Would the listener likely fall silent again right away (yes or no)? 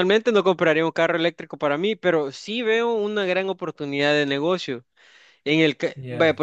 yes